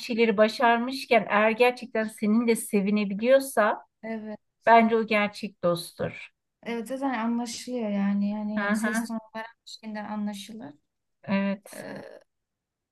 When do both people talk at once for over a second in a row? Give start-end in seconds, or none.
none